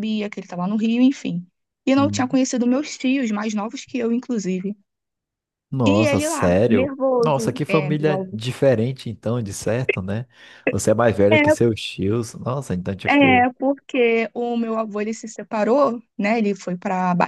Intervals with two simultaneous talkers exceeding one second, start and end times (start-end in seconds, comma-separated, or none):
5.9-8.4